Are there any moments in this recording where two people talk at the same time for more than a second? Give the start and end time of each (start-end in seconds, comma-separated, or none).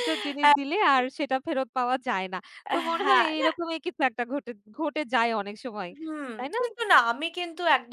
none